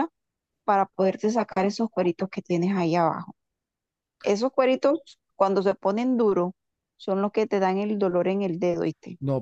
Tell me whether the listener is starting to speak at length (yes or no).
yes